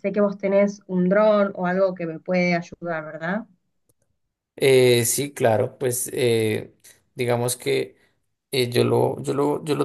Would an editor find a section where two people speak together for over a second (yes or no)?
no